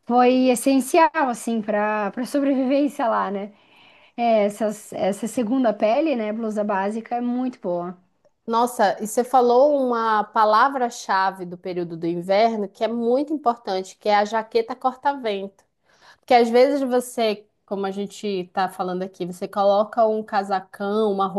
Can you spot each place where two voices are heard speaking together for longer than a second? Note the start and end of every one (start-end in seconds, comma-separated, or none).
none